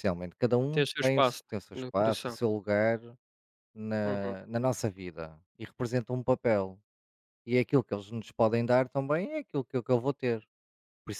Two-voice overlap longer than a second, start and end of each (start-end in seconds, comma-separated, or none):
0.7-2.4